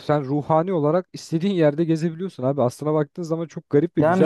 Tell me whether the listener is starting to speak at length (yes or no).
yes